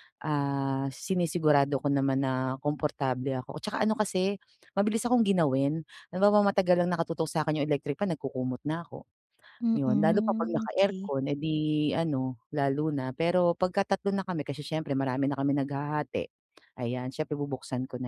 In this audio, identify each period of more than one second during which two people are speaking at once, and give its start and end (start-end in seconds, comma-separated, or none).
9.8-11.1